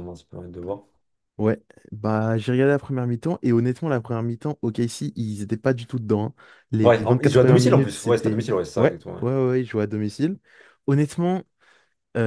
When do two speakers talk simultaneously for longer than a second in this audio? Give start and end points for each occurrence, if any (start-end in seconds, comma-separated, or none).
6.8-9.2